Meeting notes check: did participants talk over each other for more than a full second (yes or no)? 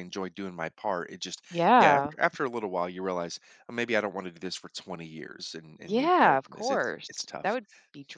yes